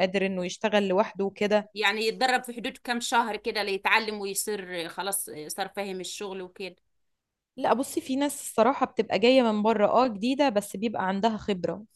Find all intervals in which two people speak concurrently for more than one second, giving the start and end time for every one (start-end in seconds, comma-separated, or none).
none